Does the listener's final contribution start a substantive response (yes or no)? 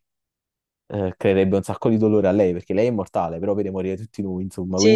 yes